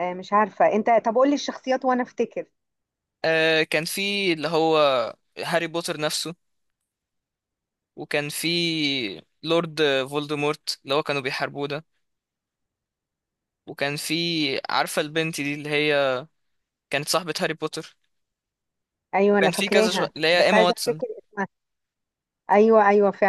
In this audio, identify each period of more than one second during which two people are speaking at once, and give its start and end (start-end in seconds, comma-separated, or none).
19.3-21.0